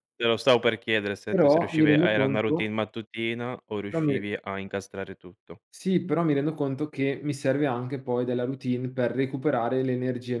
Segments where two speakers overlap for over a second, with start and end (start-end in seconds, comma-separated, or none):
1.3-2.7